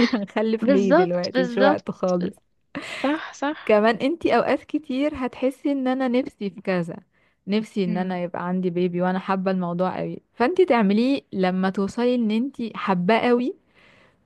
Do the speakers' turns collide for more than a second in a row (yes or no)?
yes